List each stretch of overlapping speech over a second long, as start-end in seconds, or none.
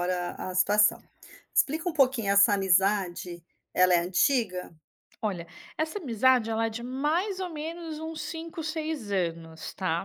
none